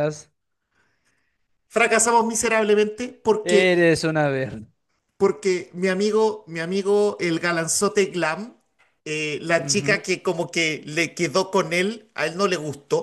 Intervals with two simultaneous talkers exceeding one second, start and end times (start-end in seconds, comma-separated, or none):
none